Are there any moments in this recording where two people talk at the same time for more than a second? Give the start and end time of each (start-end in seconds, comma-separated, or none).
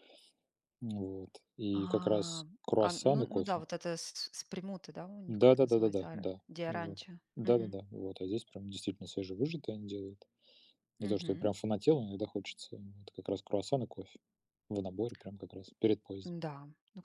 1.8-3.6, 5.3-7.2